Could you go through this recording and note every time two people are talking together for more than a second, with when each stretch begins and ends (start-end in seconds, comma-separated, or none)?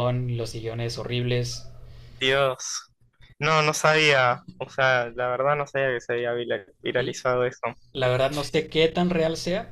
none